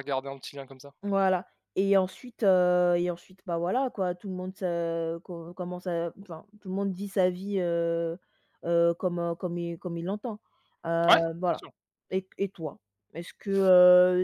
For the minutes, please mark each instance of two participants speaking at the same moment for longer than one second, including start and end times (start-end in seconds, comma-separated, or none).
none